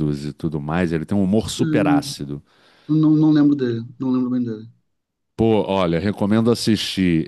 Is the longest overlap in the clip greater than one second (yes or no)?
no